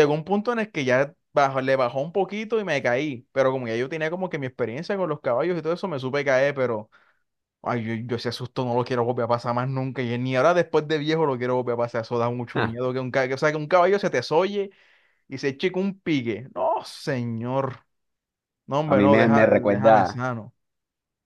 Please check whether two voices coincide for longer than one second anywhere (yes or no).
yes